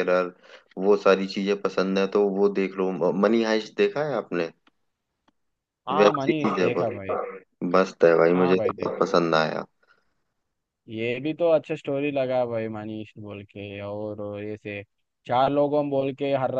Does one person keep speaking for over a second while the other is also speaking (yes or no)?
yes